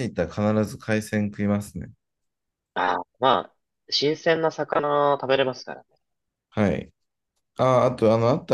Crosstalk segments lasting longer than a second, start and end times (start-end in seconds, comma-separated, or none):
none